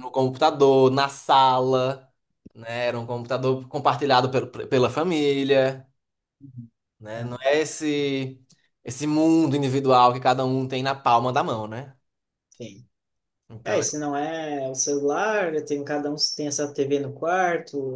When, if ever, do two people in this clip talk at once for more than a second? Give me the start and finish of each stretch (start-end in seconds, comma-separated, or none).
none